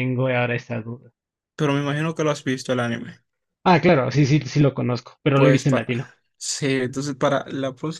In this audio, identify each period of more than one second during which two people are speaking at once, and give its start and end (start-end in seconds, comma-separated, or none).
none